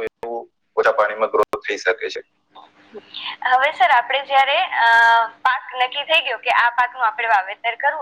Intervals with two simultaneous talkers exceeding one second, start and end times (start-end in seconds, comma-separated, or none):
none